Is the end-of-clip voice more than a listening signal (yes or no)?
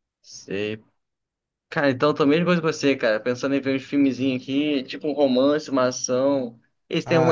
yes